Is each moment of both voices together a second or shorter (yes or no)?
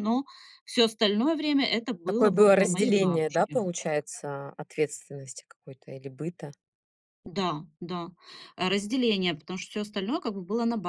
no